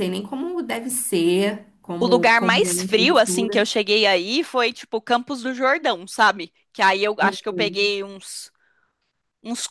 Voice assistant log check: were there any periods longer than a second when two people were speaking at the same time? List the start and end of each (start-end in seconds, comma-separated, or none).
2.0-3.7